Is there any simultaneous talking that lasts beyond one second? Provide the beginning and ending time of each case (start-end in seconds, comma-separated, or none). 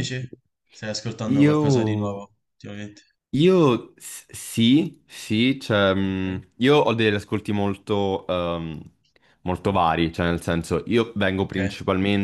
none